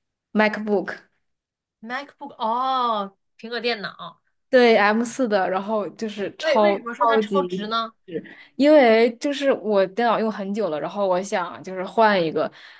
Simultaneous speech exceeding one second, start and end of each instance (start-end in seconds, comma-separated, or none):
6.4-7.9